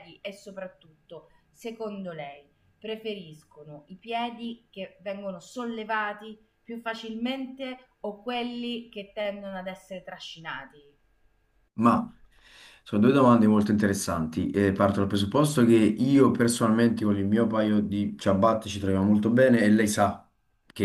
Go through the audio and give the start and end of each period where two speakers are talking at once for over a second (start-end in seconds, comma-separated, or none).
none